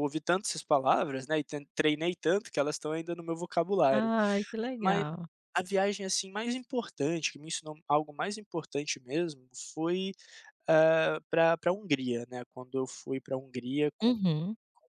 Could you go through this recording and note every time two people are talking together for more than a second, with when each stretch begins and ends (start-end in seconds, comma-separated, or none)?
none